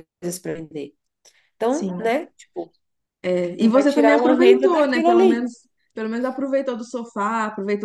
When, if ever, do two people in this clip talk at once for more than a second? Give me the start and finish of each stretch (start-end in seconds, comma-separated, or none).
3.6-5.4